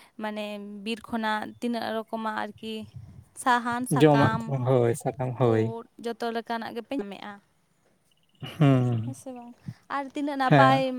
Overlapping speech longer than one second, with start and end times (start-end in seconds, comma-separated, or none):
none